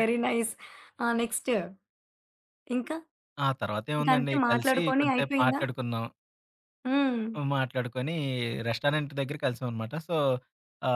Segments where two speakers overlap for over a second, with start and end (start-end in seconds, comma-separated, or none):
4.0-5.6